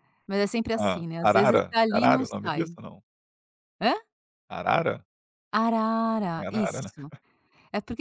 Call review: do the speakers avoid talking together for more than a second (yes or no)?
no